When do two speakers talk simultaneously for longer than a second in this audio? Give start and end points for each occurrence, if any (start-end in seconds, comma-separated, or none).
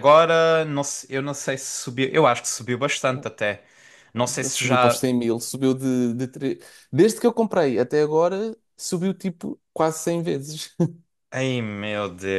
none